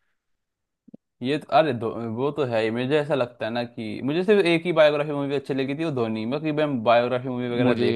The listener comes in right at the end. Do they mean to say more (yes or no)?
yes